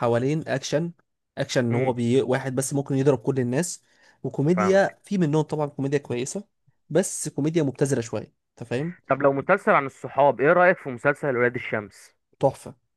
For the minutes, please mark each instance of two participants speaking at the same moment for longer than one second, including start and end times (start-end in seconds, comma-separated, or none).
none